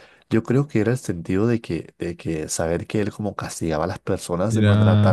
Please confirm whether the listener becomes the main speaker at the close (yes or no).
yes